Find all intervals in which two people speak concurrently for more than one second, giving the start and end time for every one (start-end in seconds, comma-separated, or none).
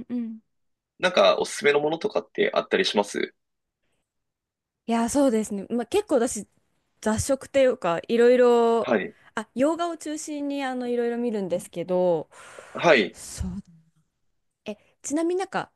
none